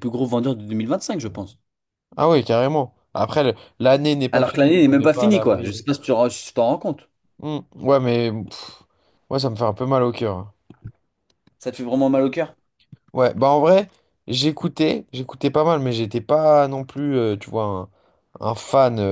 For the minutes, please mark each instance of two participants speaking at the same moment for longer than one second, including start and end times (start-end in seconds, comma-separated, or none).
4.3-5.8